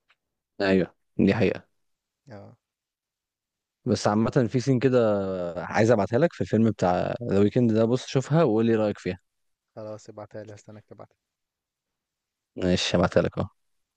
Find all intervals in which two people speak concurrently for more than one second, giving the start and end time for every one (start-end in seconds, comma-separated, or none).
none